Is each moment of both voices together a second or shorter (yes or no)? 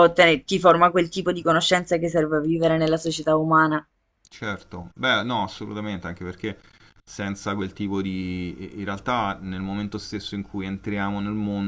yes